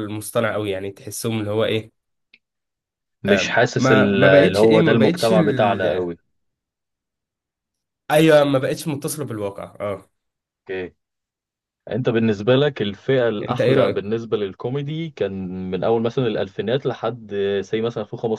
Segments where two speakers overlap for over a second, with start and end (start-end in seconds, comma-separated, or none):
3.8-6.1